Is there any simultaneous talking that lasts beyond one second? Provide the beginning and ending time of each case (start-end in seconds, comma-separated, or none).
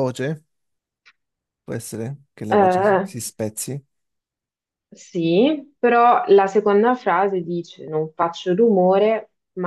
none